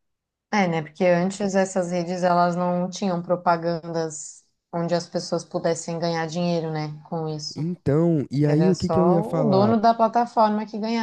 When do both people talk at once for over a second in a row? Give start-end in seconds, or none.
8.4-9.8